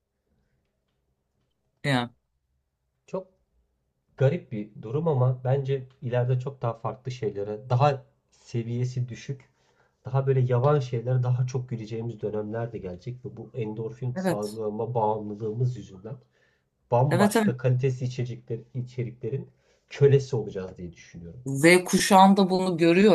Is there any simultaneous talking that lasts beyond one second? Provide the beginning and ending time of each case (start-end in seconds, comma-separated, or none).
none